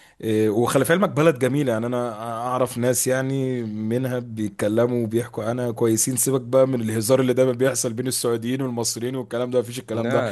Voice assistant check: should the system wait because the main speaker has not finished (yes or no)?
yes